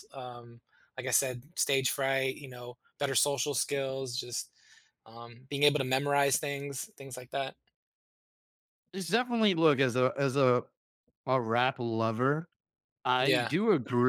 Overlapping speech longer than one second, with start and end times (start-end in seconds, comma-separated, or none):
none